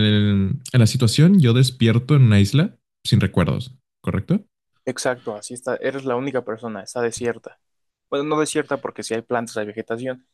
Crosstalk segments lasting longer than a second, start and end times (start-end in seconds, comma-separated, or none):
none